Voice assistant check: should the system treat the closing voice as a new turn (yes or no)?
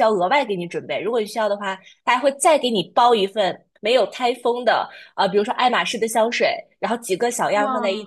no